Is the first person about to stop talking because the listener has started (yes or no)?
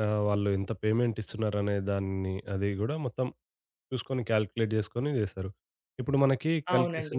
no